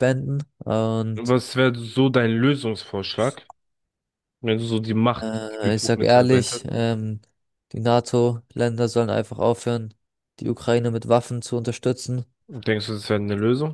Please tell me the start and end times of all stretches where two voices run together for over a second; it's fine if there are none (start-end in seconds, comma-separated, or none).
5.2-6.7